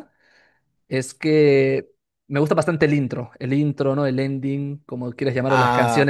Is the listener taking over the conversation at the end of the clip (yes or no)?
no